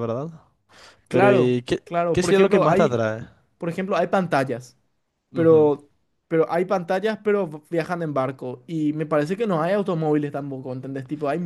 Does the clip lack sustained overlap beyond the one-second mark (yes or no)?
no